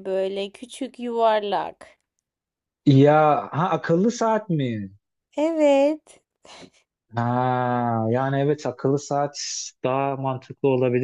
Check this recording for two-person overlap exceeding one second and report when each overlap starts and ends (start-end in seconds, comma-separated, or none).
none